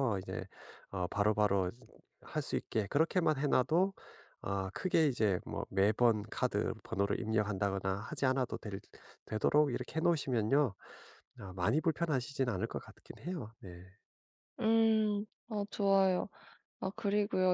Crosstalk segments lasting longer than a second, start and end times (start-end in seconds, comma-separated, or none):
none